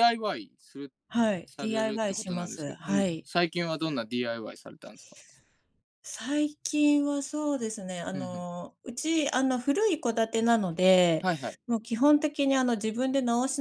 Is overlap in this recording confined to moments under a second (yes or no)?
no